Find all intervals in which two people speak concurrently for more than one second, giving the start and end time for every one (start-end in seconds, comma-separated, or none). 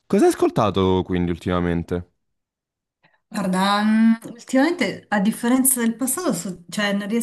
none